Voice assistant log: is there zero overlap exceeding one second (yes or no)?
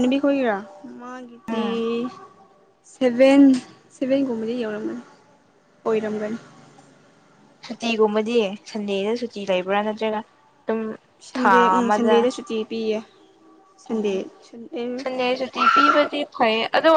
yes